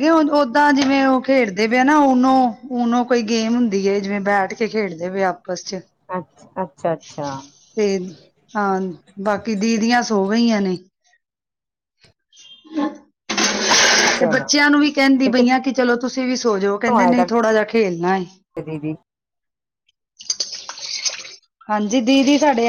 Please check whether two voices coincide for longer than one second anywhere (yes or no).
no